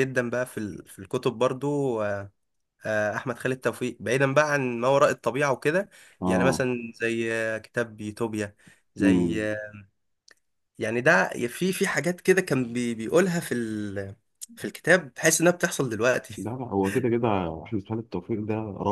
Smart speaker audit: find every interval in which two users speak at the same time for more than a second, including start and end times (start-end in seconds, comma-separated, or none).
none